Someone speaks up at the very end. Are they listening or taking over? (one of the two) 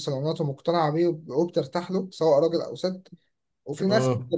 listening